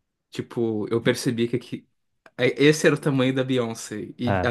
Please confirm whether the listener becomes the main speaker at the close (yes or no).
no